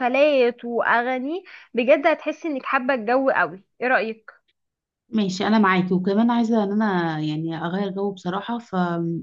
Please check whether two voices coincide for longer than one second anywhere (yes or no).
no